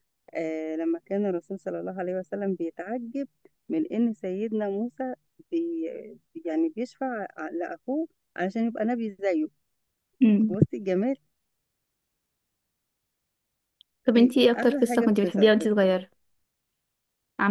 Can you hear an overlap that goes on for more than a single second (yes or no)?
yes